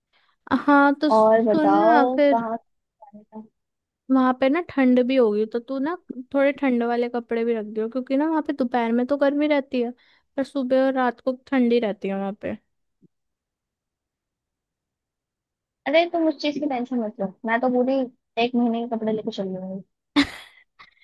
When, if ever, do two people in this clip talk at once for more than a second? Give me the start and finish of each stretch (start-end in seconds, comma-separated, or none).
1.2-2.5